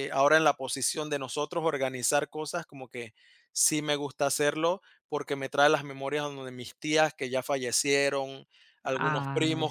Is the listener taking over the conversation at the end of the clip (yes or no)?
no